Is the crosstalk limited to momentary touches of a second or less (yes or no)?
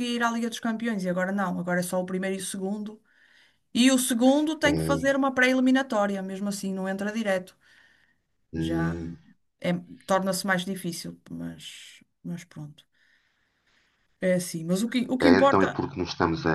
yes